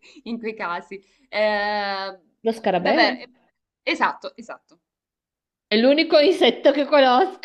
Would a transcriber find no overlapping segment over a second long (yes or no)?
yes